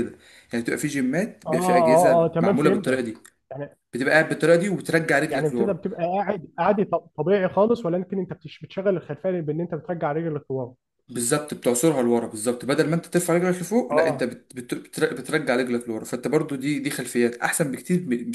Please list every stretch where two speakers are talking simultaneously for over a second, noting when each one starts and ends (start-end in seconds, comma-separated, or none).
1.5-3.0